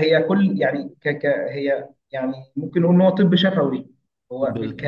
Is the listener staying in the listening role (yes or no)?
yes